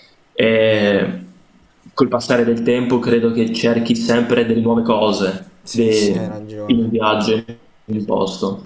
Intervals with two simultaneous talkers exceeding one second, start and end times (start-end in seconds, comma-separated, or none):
5.6-7.1